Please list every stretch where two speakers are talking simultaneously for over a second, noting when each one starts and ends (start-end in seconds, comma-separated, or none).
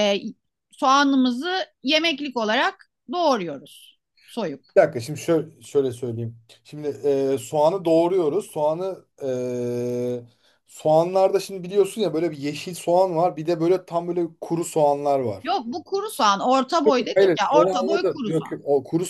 17.1-18.6